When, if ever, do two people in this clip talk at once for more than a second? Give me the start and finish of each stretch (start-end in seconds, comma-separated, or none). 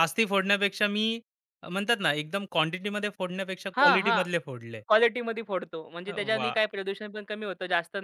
none